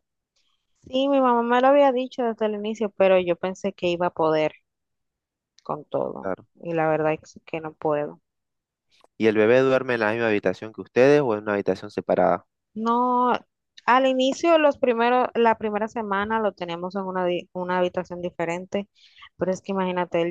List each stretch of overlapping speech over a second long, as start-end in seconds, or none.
none